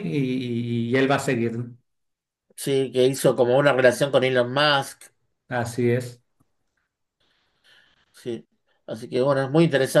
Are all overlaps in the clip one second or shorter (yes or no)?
yes